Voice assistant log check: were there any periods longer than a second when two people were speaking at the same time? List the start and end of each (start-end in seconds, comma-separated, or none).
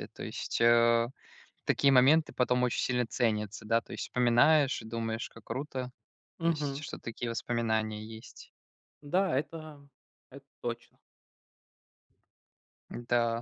none